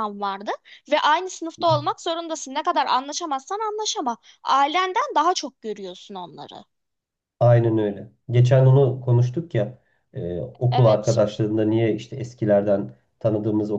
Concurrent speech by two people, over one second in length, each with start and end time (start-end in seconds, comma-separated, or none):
none